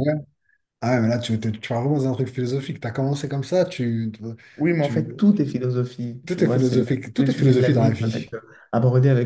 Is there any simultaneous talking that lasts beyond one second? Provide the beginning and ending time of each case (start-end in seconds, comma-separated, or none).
6.3-8.3